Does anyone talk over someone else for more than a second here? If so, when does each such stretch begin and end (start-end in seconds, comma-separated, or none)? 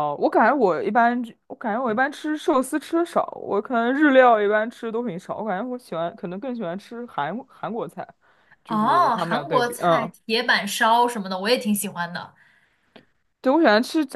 8.7-10.1